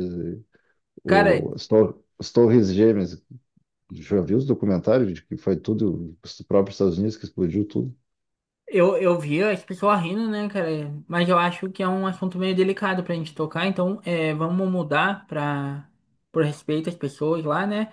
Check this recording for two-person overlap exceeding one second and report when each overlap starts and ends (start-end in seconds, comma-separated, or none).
none